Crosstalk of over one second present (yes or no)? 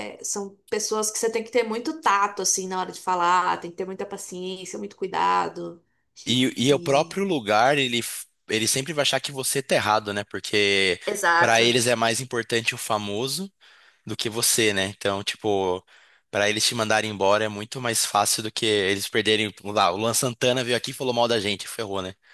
no